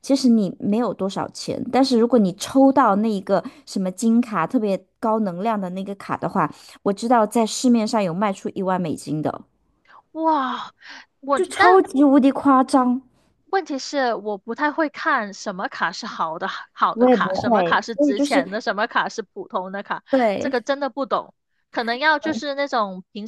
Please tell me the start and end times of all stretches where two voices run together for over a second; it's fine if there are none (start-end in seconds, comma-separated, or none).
16.9-18.4